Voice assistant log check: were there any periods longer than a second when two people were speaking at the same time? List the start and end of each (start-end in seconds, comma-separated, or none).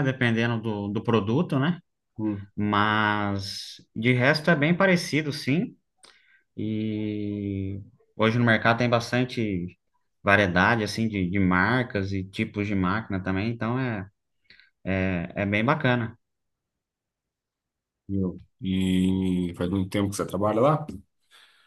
none